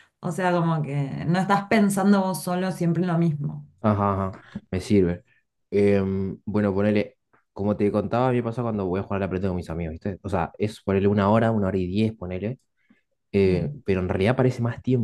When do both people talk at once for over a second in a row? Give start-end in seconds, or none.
none